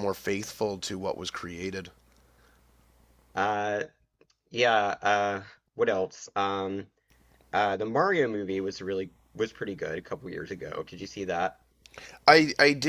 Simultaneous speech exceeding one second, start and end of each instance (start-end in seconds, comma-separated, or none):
none